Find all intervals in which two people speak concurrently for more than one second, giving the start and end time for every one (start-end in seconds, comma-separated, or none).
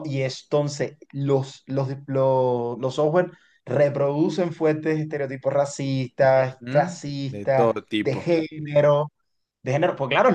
6.2-8.3